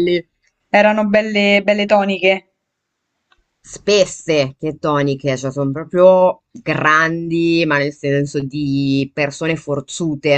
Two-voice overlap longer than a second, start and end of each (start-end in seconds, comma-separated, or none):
none